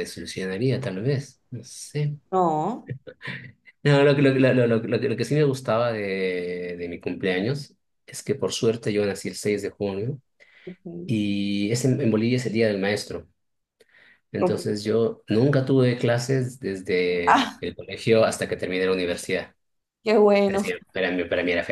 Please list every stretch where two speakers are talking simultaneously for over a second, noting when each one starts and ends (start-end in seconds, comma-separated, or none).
none